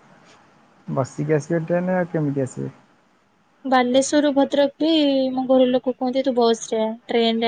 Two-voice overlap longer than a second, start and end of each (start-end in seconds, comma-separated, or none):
none